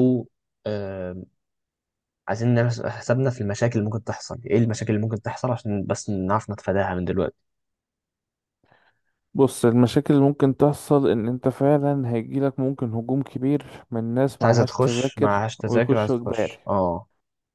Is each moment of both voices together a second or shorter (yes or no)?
no